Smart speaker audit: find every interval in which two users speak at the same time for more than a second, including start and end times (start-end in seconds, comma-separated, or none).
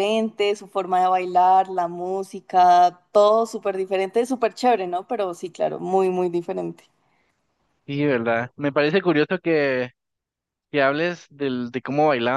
none